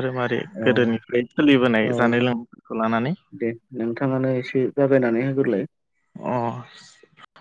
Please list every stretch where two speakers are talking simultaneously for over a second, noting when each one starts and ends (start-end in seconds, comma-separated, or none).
none